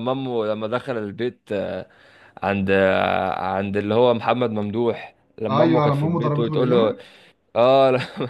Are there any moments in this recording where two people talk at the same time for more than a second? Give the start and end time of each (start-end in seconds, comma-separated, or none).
5.5-7.0